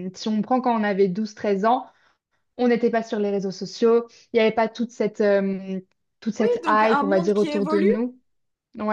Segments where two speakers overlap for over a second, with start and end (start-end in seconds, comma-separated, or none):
6.4-7.9